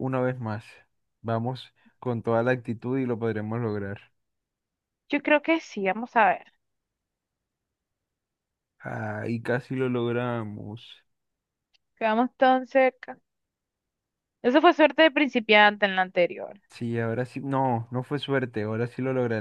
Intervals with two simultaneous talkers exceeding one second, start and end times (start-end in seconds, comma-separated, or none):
none